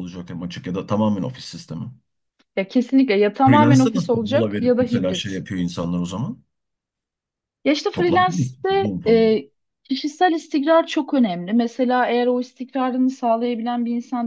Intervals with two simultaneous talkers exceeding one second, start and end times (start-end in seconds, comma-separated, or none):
3.5-5.4, 7.9-9.3